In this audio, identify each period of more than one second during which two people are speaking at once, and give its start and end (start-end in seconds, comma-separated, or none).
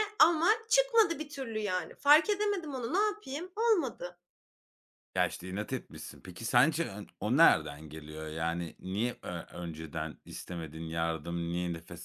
none